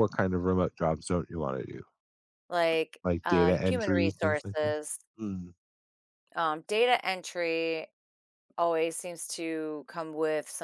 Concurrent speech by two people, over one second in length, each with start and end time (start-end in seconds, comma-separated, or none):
3.0-4.7